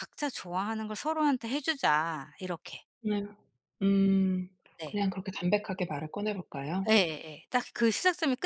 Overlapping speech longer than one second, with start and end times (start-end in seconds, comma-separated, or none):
none